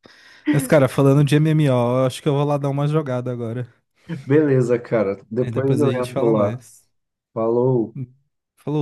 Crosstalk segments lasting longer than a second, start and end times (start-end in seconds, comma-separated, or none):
5.4-6.6